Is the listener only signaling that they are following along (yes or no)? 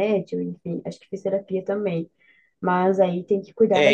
no